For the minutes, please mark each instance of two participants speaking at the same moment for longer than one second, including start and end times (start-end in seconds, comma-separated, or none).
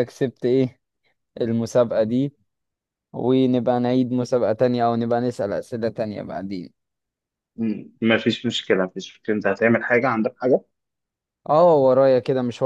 none